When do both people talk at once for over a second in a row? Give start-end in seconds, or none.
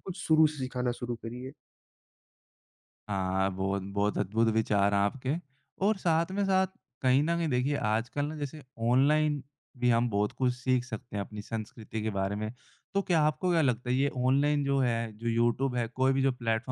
none